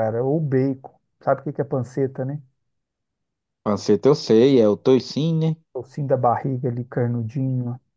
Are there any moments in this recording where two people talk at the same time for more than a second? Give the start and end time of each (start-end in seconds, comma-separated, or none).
none